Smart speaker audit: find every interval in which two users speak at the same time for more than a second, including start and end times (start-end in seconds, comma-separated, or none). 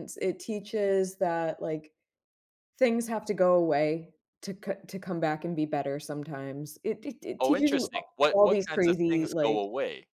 7.4-9.6